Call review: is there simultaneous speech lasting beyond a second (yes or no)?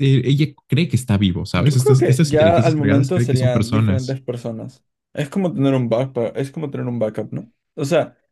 yes